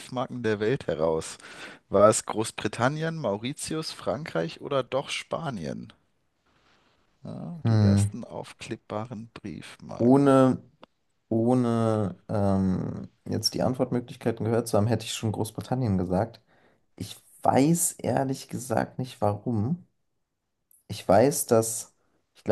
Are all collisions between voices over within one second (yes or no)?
yes